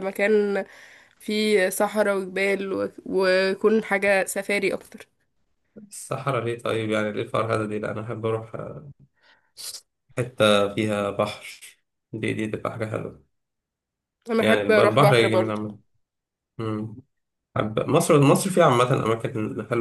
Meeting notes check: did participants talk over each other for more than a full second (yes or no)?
yes